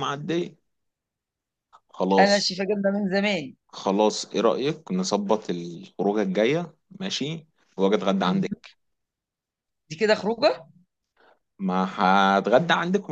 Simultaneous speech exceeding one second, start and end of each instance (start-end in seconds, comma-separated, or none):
none